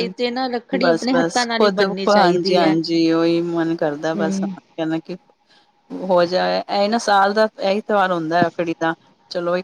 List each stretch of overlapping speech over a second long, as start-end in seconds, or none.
0.9-2.7